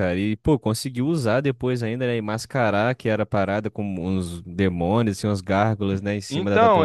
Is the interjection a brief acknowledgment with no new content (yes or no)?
no